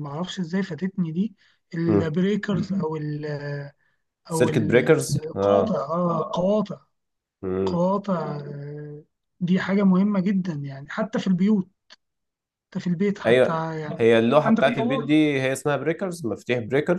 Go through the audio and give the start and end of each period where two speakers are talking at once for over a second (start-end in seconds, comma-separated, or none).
4.3-5.8, 13.2-15.2